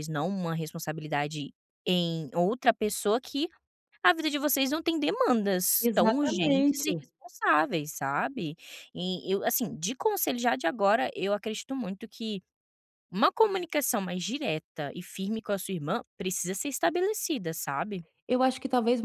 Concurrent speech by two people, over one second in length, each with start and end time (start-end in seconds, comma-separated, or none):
5.8-7.0